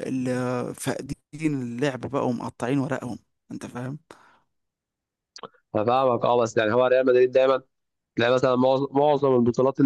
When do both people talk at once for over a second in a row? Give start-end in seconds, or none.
none